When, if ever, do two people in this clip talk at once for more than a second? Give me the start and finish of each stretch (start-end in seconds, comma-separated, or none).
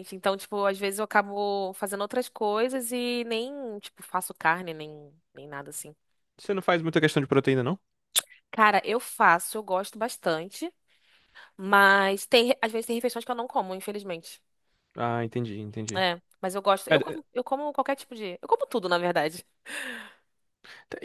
none